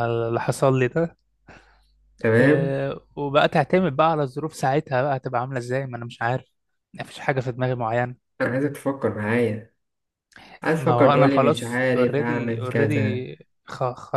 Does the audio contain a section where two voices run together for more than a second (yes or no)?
yes